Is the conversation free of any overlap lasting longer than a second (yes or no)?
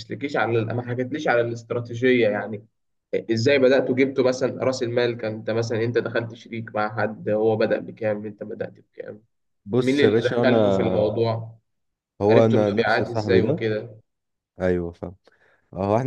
no